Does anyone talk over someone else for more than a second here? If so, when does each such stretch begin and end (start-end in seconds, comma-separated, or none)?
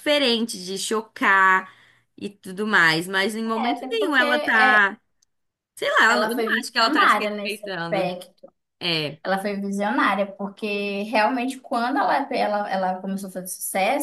3.6-4.9, 6.1-8.1